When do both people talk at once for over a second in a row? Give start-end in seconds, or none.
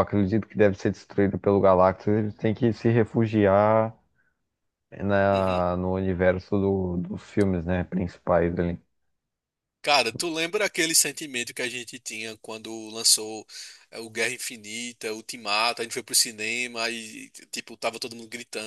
none